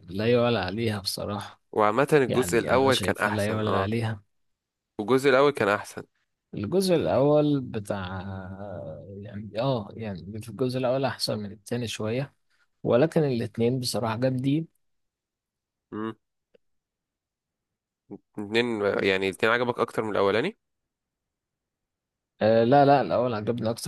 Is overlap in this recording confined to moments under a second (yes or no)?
no